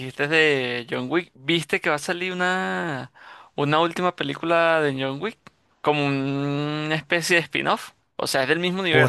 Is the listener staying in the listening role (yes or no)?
no